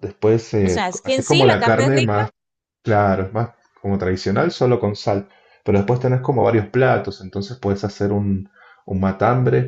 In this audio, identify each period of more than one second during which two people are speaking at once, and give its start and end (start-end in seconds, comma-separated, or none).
0.6-2.2